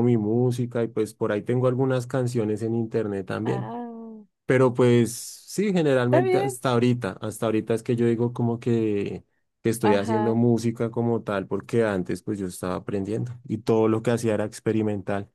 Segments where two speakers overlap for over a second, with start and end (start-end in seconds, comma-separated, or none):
none